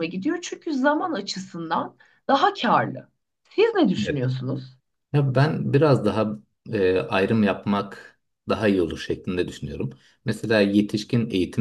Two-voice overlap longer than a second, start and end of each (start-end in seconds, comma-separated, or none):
none